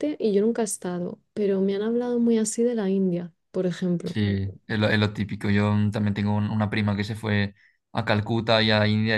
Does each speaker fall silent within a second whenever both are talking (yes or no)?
yes